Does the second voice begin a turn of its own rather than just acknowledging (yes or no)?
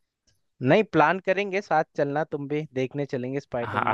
yes